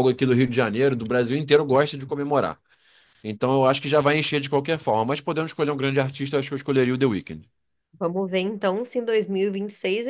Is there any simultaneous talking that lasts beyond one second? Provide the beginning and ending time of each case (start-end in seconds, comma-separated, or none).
none